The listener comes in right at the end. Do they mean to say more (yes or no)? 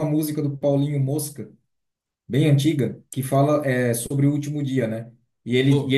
no